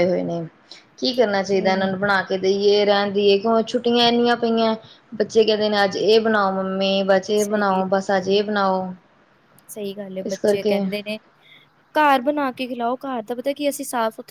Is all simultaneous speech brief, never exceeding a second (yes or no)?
yes